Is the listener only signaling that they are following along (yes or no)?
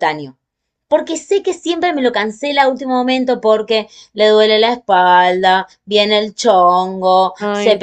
yes